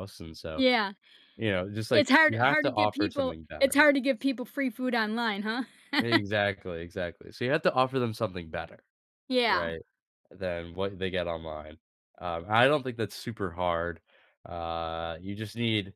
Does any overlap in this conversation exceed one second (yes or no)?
yes